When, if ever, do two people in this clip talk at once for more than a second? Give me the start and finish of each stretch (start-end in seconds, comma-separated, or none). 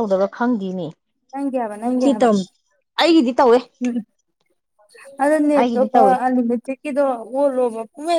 none